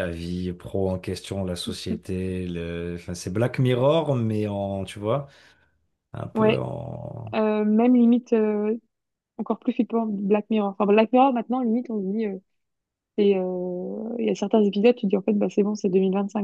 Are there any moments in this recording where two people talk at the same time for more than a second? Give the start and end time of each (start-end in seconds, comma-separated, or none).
none